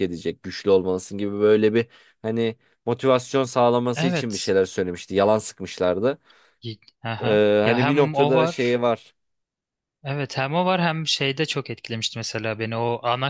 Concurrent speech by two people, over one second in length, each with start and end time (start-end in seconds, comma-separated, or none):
7.2-8.6